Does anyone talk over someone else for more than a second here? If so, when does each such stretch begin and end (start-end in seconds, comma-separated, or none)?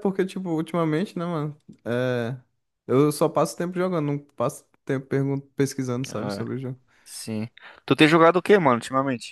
none